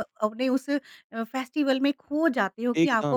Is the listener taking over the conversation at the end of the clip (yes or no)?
no